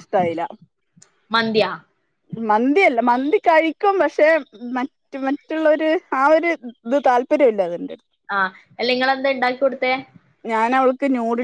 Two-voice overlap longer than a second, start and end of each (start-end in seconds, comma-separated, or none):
none